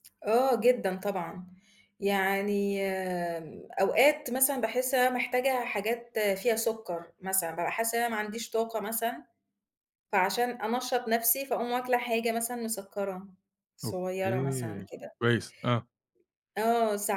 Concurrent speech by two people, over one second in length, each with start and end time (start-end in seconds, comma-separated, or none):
13.8-15.2